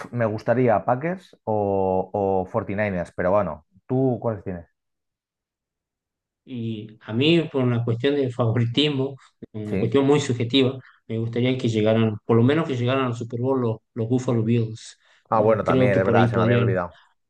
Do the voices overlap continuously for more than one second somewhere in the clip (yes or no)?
yes